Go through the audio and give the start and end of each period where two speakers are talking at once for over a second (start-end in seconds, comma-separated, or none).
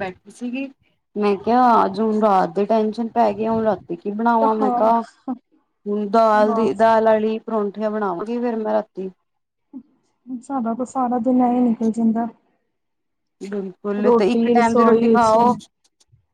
14.0-15.5